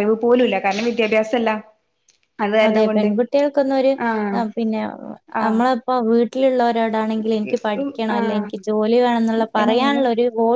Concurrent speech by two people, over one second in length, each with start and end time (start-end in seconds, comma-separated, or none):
none